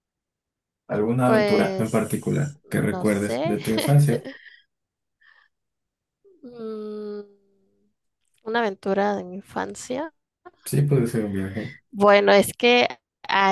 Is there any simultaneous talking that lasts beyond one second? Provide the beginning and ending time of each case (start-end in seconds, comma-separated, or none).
1.2-3.6